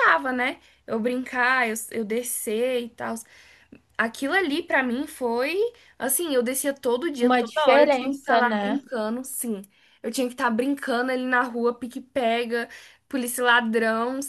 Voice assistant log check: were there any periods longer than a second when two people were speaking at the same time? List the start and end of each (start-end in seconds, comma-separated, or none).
7.2-8.8